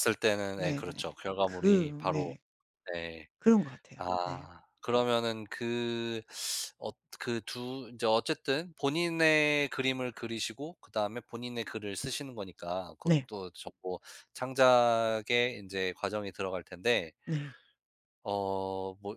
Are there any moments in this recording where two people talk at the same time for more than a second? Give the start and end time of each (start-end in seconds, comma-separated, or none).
0.6-2.4